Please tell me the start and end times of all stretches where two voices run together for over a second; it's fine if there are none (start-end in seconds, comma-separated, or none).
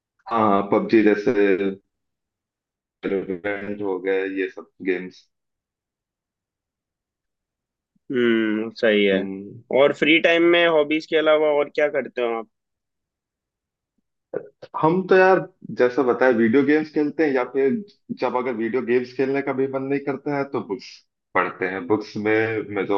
none